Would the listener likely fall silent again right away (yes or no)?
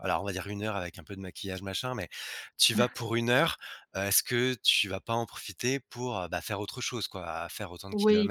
no